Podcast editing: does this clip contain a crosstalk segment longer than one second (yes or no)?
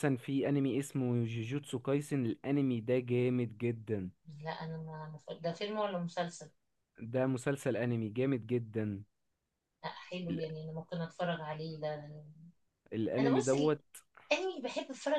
no